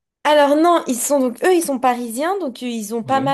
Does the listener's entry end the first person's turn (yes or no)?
no